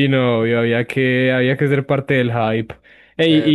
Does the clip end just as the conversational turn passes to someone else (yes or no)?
yes